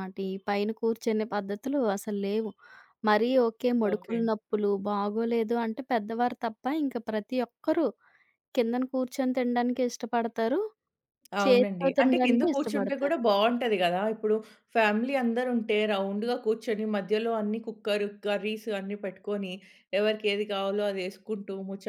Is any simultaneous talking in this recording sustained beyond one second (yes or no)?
yes